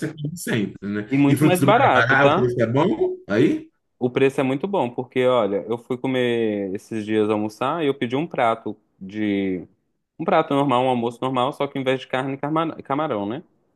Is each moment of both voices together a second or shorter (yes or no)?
no